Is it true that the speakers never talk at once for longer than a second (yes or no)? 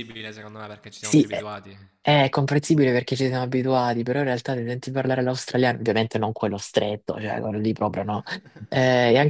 yes